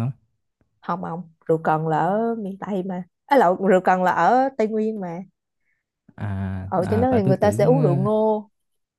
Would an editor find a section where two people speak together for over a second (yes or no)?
yes